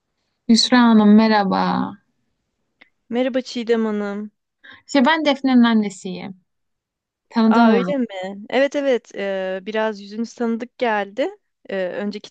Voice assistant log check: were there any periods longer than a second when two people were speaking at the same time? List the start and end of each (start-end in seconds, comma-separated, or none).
none